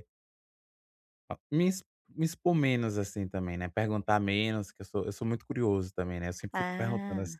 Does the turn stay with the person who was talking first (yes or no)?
yes